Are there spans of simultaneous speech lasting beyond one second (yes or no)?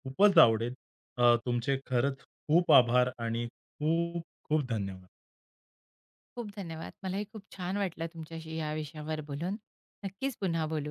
no